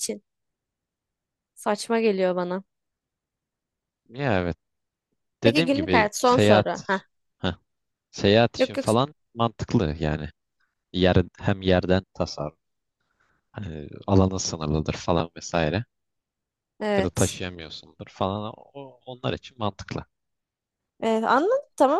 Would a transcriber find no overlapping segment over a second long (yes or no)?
no